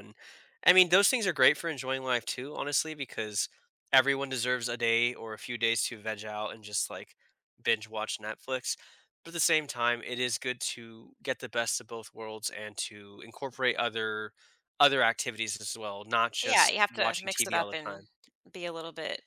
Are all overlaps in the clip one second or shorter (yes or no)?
no